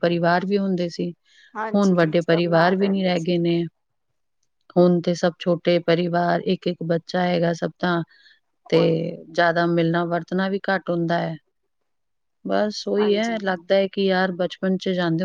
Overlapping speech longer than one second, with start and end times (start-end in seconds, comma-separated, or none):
1.7-3.3